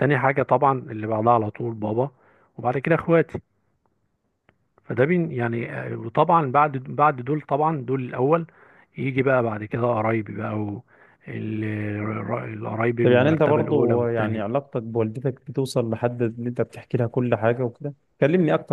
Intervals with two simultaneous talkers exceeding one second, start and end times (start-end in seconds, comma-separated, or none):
13.0-14.5